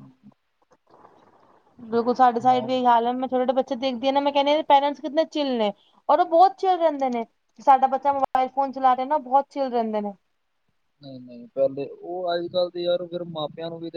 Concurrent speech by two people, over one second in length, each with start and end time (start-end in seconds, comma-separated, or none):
none